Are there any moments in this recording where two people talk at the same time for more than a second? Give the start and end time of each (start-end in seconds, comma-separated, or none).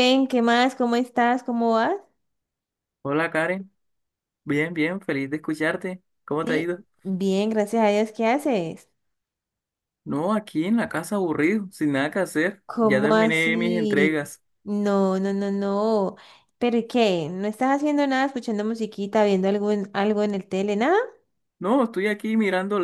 12.7-14.2